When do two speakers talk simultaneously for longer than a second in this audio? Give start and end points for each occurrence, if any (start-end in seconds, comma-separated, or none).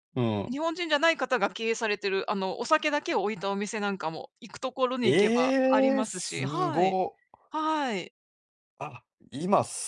5.0-7.0